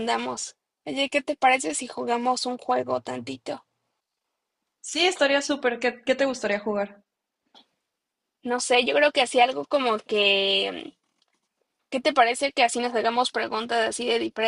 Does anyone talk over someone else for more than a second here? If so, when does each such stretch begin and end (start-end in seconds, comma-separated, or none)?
none